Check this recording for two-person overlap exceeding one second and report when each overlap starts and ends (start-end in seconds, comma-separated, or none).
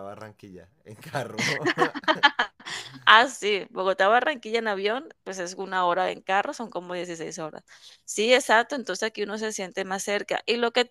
none